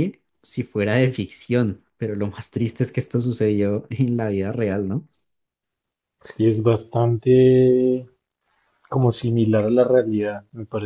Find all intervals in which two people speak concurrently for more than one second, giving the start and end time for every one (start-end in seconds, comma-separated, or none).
none